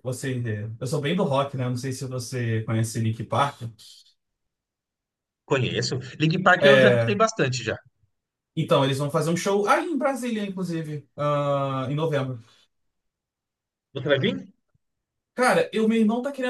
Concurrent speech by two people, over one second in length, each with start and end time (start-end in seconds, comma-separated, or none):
none